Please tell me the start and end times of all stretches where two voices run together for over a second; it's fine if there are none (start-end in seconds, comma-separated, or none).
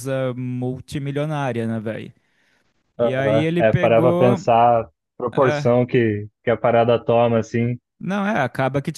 3.0-4.4